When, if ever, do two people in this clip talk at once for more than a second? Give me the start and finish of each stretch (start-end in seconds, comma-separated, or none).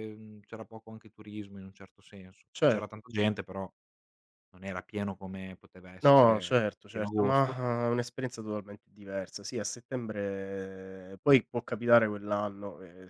6.0-7.6